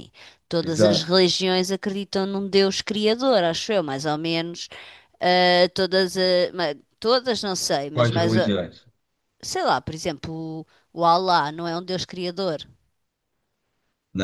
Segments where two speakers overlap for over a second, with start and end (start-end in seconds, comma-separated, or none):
none